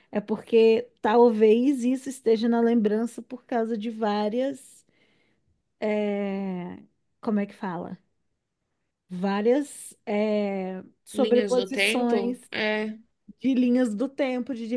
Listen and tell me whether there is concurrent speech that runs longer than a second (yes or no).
yes